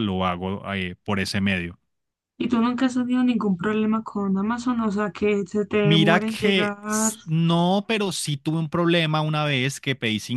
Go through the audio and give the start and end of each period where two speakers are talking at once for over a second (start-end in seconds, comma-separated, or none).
5.8-7.1